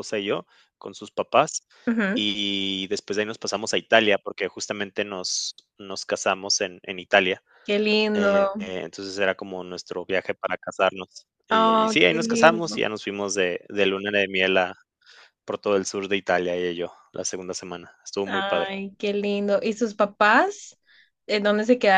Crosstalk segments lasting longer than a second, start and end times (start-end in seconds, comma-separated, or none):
11.5-12.9